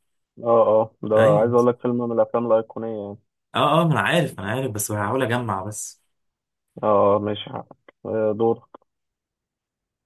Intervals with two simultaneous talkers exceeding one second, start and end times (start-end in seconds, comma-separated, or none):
none